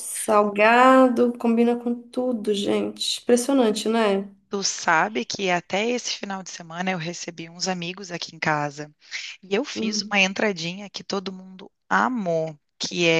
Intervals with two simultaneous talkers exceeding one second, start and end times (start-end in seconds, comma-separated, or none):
none